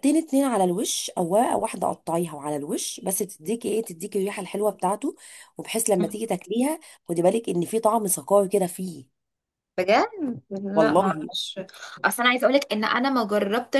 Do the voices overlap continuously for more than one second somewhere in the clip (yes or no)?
no